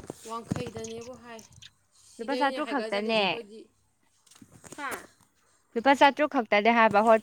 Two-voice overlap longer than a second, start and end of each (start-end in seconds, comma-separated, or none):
2.2-3.4